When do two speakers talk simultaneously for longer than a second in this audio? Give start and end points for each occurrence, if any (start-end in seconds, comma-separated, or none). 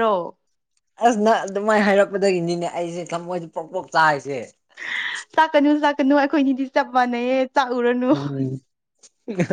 none